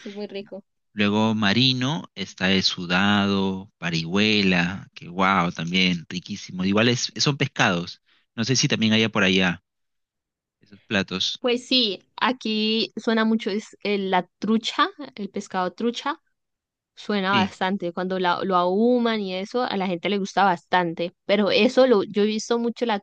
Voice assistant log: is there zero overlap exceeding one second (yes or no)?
yes